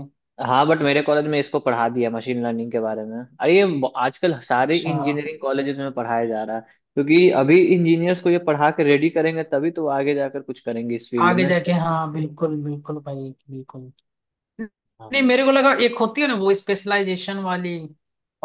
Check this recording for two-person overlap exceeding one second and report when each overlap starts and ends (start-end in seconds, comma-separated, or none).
none